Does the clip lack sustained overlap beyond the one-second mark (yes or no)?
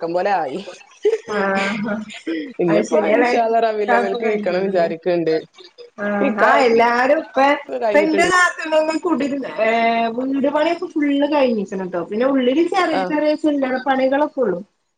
no